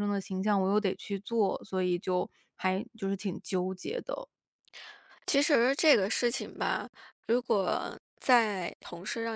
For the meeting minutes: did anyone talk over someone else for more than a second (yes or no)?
no